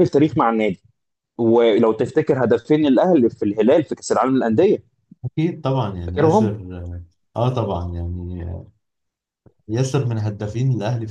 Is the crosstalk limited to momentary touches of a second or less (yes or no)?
yes